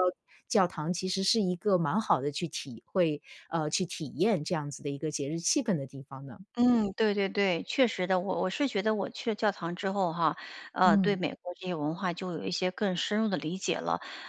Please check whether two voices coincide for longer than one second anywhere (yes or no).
no